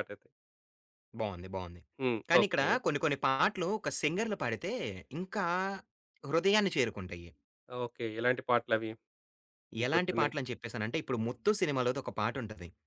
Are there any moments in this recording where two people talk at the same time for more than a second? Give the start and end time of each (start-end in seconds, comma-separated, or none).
none